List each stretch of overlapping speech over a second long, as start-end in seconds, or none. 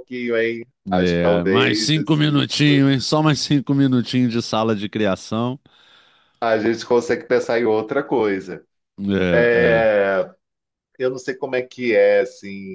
1.0-2.8